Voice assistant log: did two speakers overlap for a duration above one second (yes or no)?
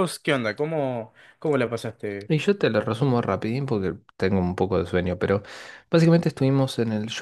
no